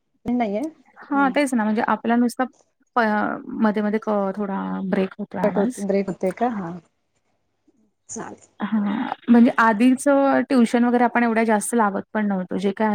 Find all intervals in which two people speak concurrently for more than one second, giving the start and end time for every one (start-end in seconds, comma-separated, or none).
none